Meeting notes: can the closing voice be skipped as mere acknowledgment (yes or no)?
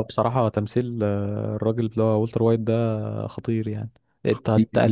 yes